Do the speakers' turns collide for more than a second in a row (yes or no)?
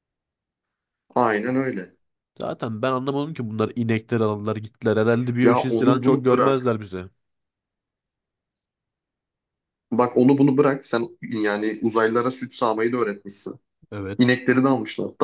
yes